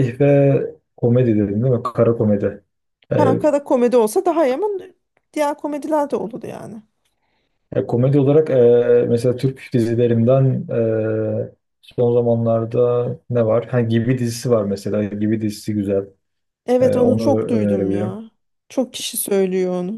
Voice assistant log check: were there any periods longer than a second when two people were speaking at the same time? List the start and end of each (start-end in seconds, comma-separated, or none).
16.8-18.2